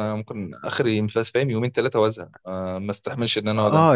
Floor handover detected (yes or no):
yes